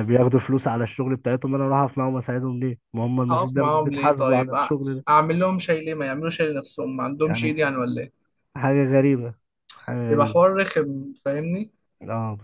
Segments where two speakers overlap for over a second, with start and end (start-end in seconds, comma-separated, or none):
3.3-4.7